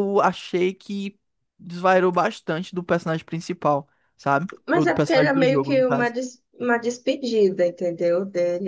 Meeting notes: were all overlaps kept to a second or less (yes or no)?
no